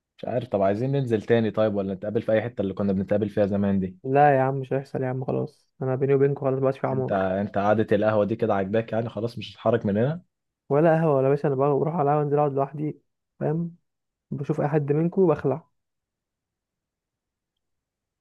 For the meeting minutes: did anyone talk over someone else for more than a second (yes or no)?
no